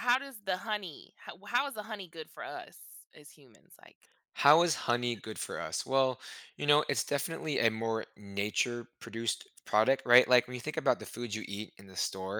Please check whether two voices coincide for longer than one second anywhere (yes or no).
no